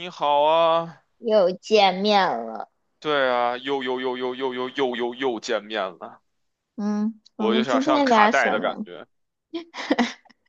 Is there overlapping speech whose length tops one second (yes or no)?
yes